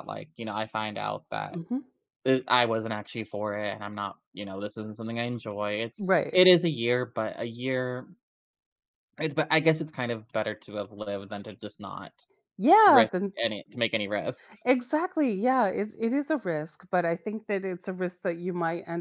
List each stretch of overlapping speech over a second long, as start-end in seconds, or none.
none